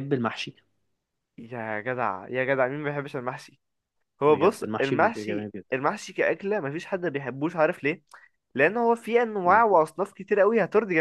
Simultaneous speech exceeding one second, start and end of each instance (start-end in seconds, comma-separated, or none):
4.3-5.7